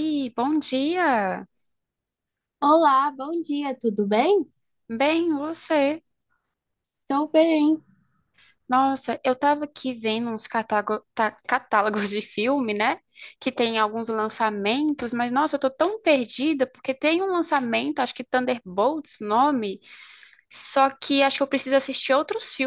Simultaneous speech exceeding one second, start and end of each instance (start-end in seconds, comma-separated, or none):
none